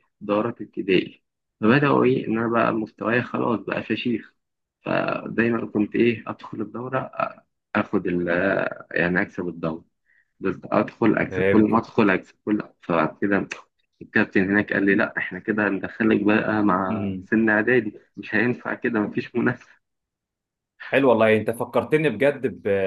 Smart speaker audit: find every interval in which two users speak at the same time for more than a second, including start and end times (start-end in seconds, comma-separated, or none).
none